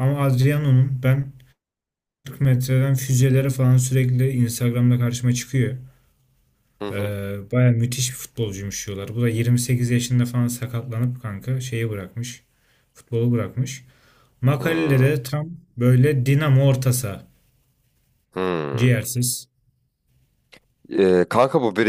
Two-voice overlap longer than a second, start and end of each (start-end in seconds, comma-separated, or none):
none